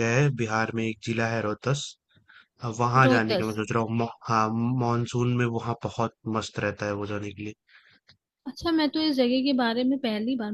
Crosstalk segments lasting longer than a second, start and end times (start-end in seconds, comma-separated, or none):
none